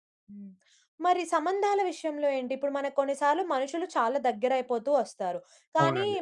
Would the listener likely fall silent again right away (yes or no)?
yes